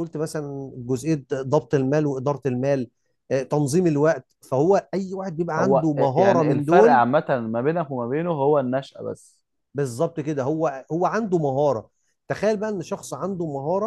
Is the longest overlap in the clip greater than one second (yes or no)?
yes